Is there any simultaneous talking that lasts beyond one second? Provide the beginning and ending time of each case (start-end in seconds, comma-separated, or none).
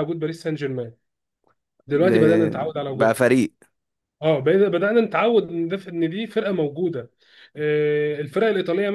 1.9-3.2